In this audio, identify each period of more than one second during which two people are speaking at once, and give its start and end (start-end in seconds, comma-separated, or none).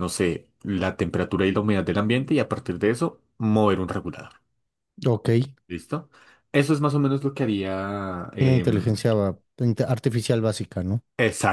none